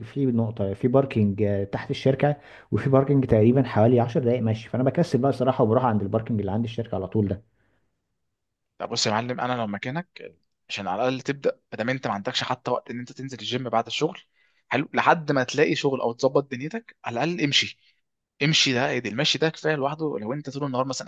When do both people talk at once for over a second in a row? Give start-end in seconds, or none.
none